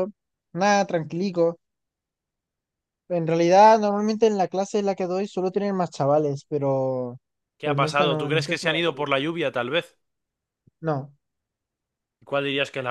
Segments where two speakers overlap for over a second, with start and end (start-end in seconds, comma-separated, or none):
7.6-9.1